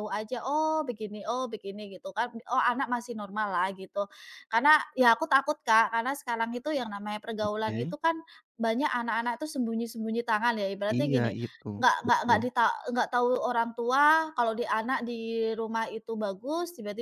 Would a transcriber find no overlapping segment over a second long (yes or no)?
yes